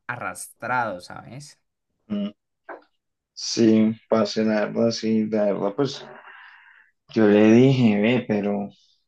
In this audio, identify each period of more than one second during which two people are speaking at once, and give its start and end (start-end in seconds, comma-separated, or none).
none